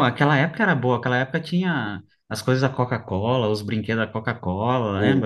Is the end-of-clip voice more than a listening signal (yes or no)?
yes